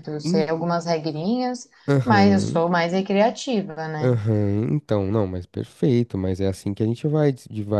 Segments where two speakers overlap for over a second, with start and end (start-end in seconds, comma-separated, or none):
none